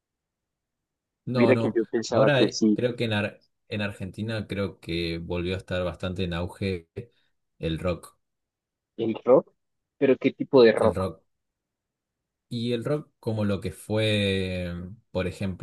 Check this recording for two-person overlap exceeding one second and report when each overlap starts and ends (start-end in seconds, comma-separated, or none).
1.3-2.8